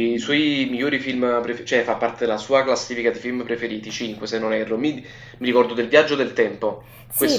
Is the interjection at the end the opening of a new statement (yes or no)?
yes